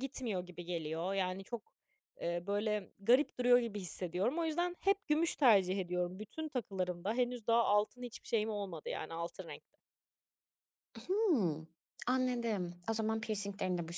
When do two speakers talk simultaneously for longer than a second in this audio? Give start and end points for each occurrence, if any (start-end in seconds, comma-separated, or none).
none